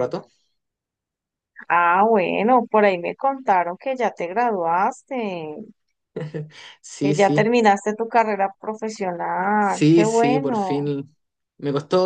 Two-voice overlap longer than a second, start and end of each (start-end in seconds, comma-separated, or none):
9.6-10.9